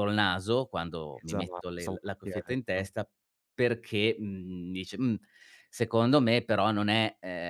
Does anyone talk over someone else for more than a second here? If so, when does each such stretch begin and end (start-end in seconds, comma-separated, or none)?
1.1-2.9